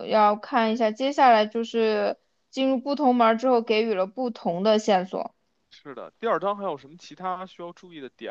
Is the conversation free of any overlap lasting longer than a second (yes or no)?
yes